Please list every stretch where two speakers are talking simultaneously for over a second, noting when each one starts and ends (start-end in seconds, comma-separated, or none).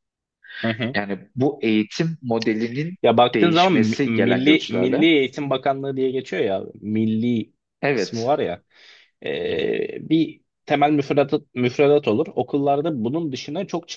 3.3-5.0